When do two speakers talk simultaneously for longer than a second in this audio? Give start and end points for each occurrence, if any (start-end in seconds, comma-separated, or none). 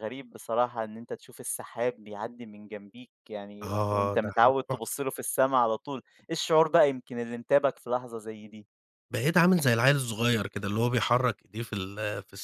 3.6-5.1